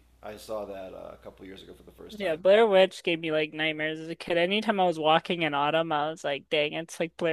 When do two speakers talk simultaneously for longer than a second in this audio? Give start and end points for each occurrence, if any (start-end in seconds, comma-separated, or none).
none